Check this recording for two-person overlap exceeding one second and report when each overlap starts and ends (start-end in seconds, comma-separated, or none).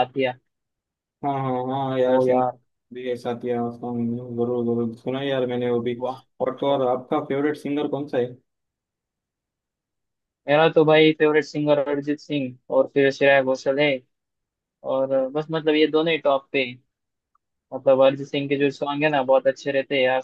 none